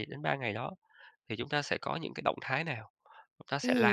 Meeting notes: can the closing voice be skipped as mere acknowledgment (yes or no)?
no